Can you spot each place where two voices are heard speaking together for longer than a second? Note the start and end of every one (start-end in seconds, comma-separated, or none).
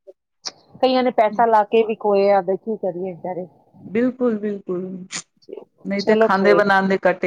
none